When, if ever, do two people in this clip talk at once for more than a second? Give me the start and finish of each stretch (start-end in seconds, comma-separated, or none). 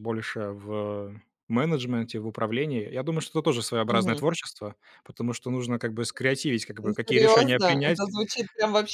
6.8-8.1